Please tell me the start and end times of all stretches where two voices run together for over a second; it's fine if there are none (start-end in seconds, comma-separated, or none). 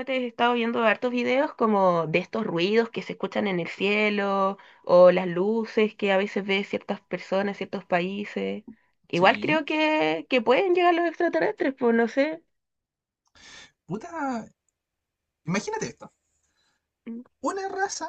none